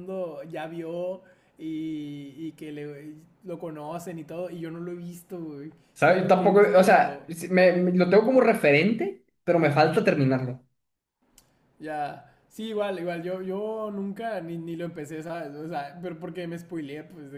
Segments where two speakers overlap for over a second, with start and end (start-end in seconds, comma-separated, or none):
6.0-7.3